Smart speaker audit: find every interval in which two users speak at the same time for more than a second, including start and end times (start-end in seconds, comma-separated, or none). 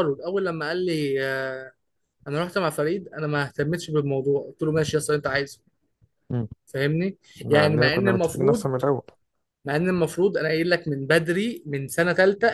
7.4-8.7